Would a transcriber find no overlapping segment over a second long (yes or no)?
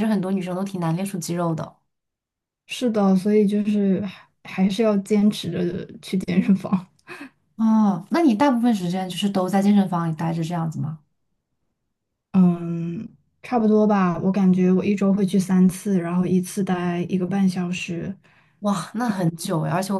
yes